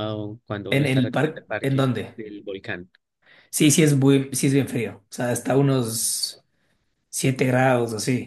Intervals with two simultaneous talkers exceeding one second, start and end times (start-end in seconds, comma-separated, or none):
0.7-2.2